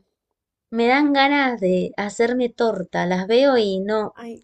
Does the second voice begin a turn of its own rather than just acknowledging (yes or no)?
yes